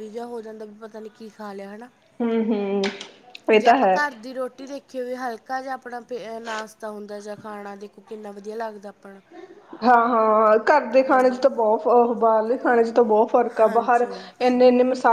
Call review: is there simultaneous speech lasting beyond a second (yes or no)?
no